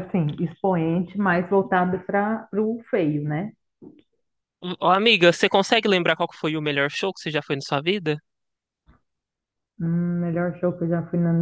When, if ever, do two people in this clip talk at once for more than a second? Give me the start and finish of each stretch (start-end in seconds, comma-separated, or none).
none